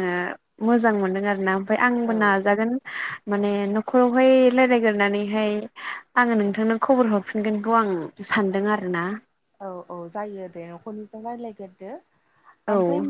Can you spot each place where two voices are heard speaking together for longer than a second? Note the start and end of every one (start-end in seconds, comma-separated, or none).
none